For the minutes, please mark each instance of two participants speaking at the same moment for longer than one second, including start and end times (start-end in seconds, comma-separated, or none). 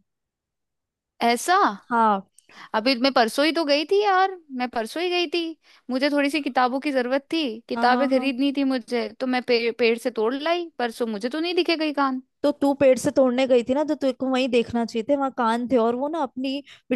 none